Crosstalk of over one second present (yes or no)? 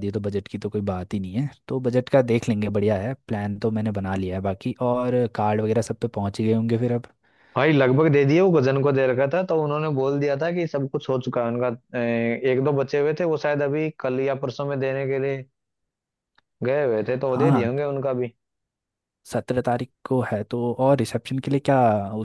no